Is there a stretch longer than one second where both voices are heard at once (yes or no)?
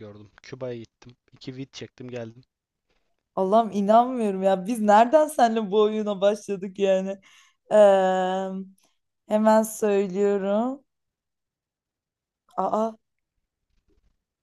no